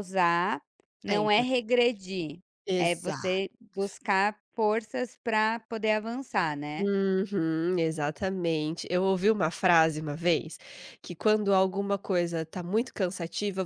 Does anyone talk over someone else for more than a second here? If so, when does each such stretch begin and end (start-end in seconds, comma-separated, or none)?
none